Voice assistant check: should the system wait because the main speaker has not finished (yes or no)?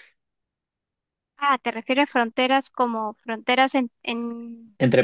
no